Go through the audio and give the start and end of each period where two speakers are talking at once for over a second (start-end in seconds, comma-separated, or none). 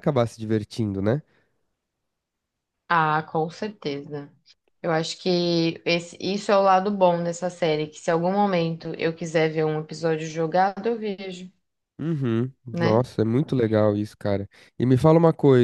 none